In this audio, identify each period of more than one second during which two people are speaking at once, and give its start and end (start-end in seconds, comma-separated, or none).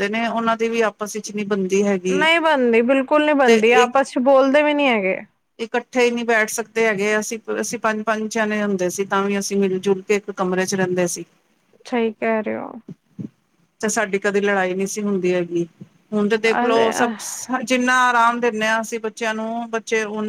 none